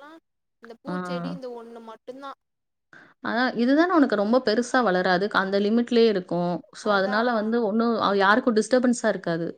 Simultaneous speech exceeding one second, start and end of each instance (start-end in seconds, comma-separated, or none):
none